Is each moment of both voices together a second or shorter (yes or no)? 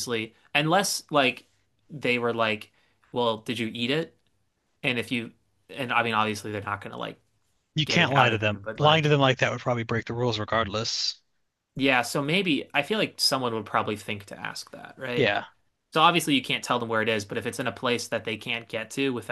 no